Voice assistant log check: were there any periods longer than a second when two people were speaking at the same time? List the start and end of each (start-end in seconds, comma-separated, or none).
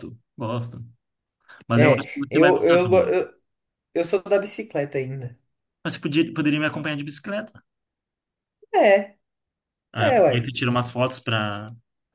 1.7-3.1